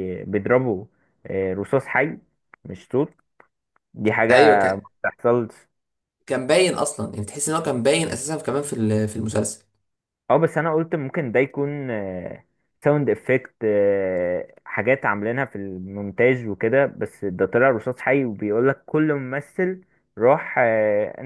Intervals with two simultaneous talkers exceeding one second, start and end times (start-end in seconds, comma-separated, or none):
none